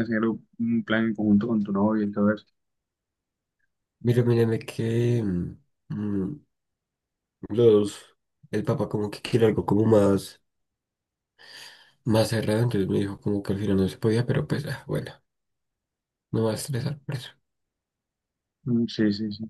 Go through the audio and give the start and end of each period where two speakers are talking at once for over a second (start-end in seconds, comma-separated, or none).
none